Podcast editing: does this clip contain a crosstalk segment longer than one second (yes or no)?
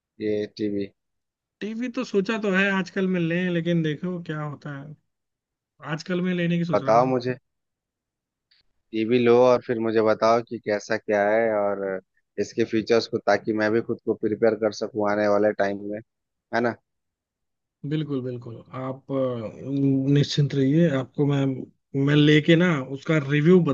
no